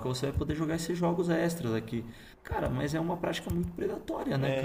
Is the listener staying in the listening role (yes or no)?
no